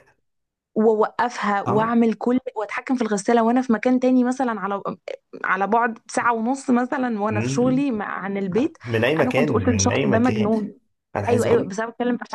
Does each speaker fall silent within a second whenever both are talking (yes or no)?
no